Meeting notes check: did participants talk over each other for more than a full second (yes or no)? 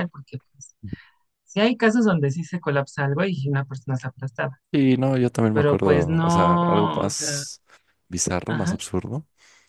yes